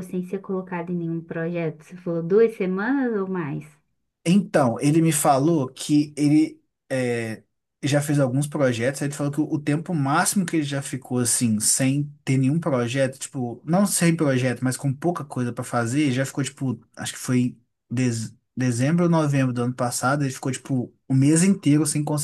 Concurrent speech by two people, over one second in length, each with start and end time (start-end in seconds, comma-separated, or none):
none